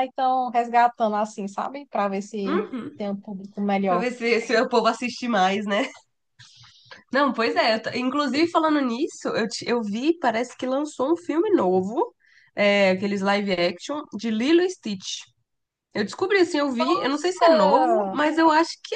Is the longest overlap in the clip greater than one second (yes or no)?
yes